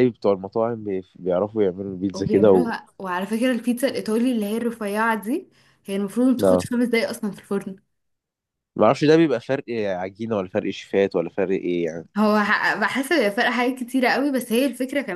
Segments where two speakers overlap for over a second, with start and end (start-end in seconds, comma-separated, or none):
none